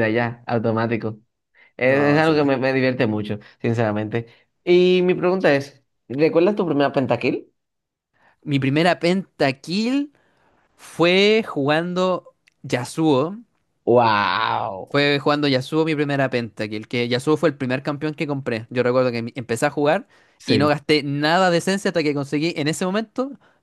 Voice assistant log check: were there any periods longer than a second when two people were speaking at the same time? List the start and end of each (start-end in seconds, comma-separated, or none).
none